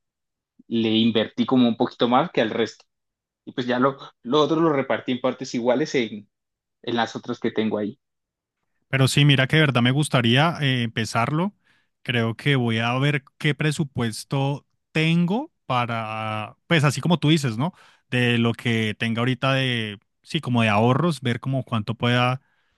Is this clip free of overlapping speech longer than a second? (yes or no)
yes